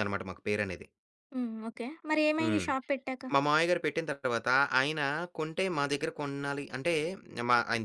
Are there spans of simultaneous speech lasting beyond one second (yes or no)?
no